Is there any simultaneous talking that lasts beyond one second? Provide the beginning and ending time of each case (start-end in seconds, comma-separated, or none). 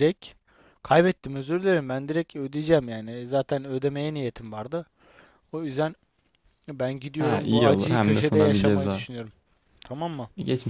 7.2-9.1